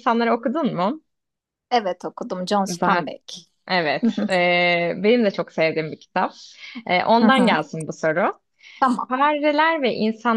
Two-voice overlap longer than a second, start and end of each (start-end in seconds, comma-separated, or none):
none